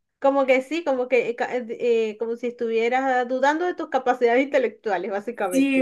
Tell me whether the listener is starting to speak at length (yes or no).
yes